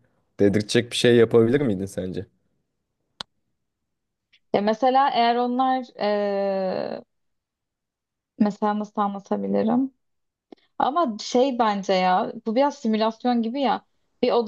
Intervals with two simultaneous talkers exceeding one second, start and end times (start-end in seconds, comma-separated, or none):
none